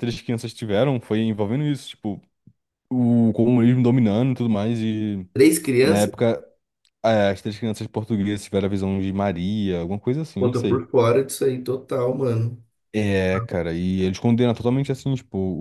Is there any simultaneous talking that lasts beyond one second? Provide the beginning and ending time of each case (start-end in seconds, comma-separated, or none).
none